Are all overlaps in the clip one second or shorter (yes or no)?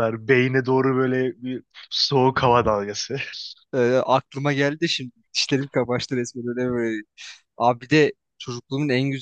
yes